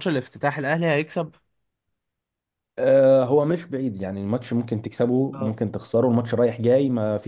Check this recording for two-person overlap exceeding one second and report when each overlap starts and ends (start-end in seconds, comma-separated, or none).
none